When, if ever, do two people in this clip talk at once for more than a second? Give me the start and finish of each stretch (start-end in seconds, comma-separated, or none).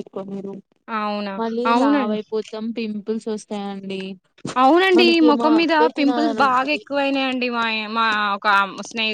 5.0-6.8